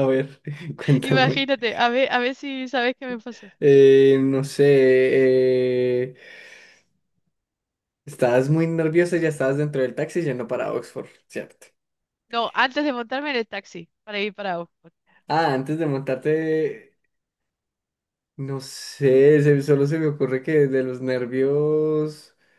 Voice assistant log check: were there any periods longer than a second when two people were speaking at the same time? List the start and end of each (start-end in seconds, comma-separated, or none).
none